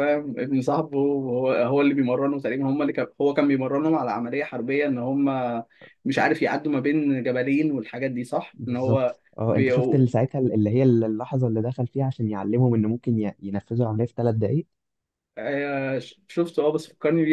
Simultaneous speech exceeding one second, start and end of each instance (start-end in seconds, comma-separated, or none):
8.5-10.1